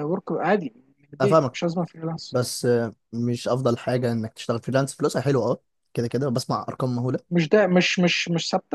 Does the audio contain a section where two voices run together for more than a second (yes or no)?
no